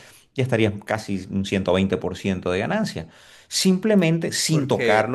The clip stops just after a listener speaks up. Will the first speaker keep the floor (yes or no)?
yes